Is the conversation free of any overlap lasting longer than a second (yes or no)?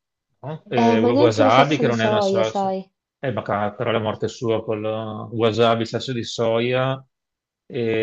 no